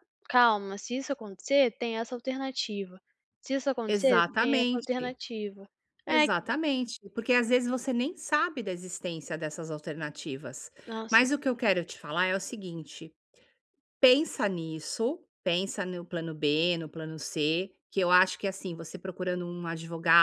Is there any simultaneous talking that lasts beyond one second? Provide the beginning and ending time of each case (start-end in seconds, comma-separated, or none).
3.9-5.1